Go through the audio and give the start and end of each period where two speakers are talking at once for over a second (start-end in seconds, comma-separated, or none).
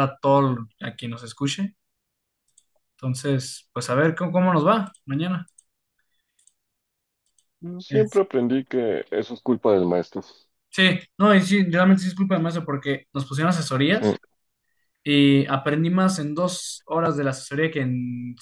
none